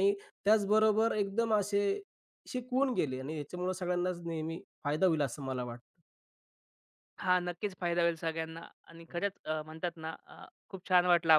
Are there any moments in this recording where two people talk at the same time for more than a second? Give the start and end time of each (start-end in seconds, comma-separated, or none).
none